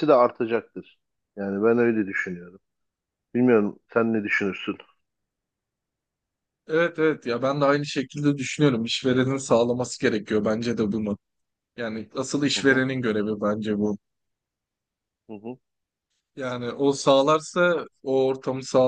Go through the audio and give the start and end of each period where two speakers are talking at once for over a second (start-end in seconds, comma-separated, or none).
none